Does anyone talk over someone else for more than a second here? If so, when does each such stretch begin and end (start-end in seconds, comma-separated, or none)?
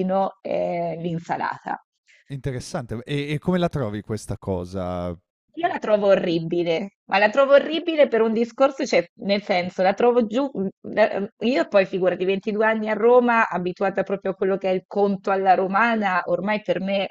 none